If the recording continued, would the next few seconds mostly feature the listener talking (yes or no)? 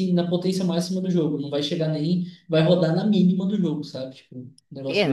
yes